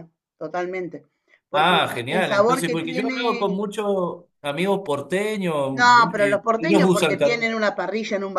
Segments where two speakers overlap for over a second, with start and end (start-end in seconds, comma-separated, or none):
1.5-3.6, 5.7-7.5